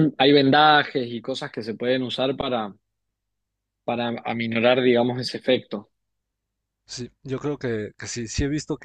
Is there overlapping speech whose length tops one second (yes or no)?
no